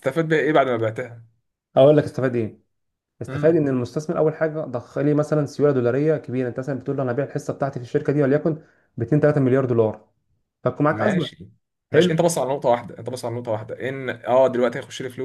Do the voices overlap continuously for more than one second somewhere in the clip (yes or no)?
no